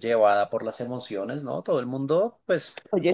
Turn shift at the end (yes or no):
no